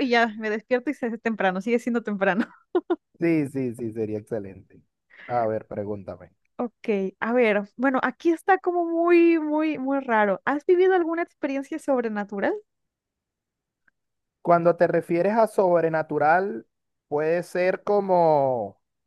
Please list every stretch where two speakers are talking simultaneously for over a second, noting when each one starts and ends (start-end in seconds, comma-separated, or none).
none